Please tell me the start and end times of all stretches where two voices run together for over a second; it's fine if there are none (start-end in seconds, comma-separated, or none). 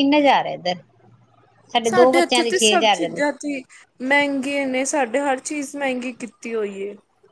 2.0-3.2